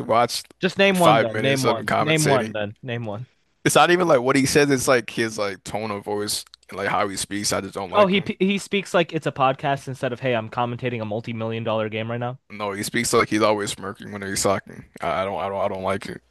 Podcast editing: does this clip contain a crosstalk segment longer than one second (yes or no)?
yes